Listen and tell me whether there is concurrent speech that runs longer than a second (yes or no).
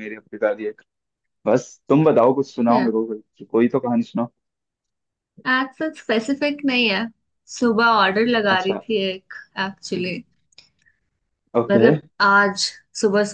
no